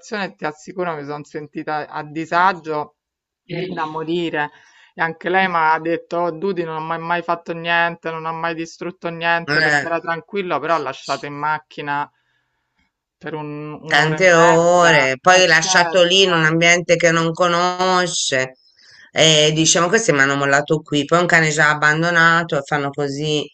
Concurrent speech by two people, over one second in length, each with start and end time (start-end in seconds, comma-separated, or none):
13.9-16.6